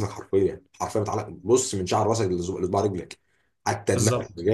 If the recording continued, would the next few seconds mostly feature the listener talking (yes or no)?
no